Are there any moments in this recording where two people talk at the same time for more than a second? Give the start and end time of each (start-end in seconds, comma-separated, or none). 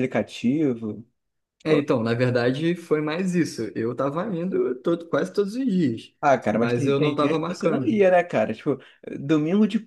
6.5-8.0